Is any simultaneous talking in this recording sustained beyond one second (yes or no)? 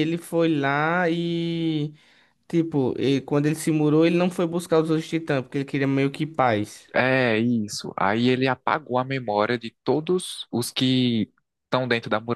no